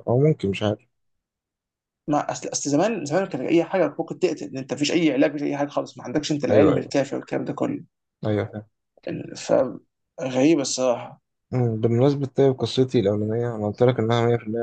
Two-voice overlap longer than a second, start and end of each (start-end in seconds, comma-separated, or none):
none